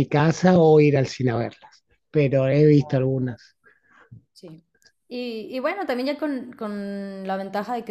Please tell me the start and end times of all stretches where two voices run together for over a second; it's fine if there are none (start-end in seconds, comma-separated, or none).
none